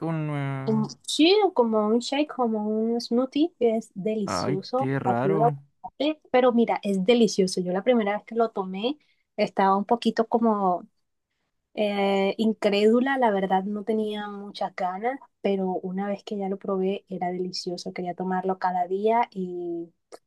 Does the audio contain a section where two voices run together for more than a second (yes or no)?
yes